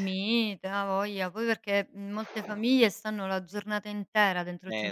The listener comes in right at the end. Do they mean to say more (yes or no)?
no